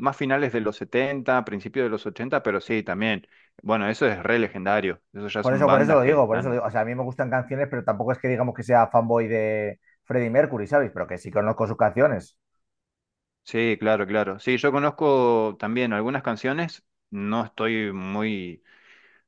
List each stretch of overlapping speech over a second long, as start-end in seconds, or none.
5.4-6.6